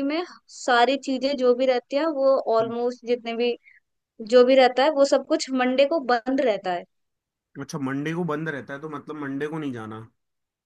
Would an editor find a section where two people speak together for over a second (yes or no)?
no